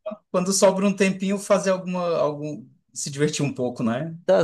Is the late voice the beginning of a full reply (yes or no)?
yes